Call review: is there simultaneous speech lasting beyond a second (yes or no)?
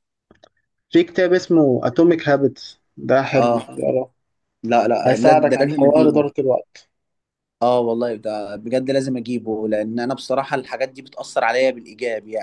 yes